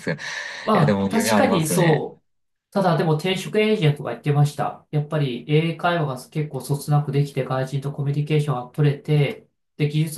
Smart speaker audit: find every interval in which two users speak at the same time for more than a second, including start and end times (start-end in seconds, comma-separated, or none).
0.7-2.1